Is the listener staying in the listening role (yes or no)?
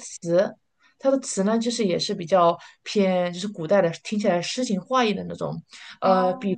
yes